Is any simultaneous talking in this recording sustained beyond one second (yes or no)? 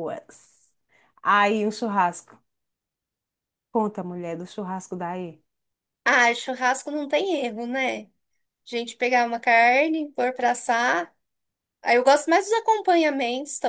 no